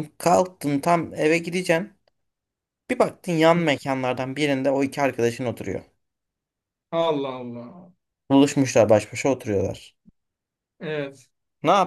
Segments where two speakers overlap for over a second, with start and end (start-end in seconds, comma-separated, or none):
none